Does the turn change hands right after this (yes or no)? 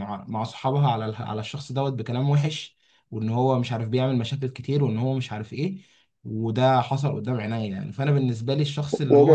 no